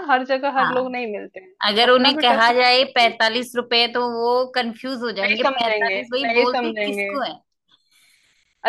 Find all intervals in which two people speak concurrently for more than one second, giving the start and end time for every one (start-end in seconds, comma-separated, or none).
1.7-3.1, 5.2-7.1